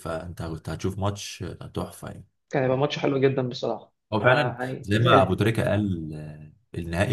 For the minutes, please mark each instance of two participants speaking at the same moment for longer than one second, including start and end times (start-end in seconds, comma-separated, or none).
4.1-5.4